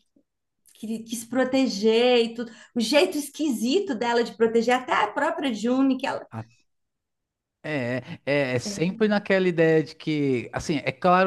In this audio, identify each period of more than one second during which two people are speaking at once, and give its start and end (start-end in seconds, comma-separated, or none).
none